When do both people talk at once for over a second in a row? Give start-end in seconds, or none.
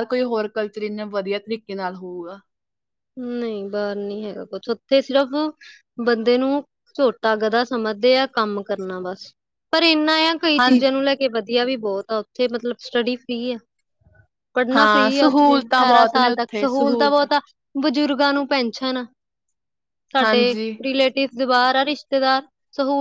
14.8-16.7